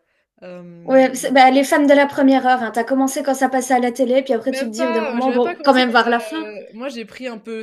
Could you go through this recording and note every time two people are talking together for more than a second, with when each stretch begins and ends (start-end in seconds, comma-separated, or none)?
4.5-6.5